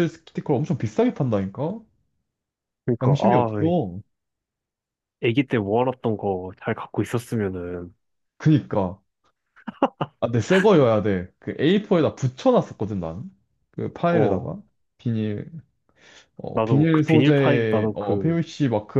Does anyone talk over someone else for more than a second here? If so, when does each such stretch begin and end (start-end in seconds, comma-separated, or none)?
16.5-18.4